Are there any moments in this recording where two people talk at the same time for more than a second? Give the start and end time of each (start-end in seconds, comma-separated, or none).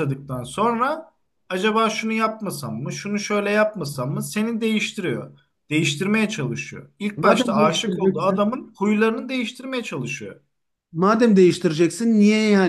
7.2-8.4